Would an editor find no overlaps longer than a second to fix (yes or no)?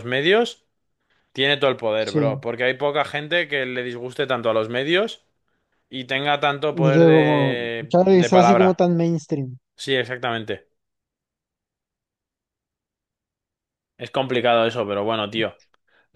no